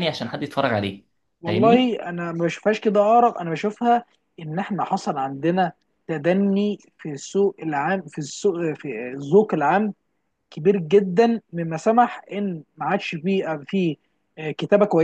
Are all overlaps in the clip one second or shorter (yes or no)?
yes